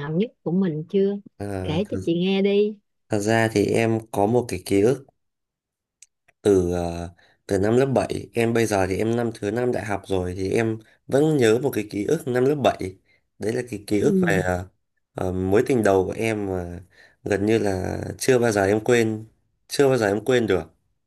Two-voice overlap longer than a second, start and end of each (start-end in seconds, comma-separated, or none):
none